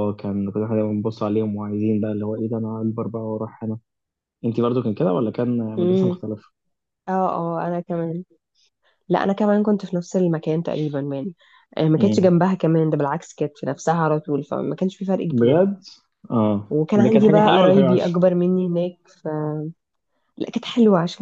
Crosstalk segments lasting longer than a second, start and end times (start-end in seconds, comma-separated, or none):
16.7-18.2